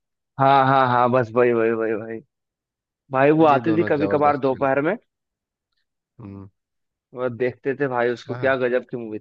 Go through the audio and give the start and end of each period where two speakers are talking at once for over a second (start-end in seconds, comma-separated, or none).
3.5-4.8